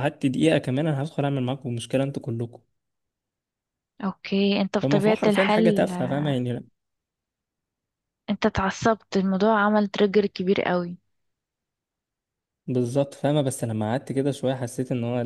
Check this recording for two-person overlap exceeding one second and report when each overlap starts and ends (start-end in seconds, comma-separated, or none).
4.8-6.2